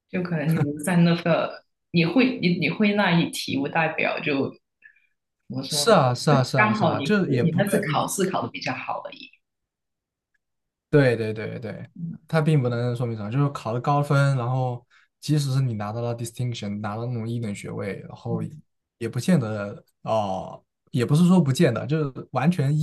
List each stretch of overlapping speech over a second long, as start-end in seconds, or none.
5.7-8.0